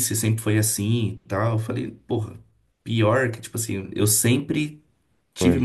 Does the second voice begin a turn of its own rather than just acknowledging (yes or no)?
no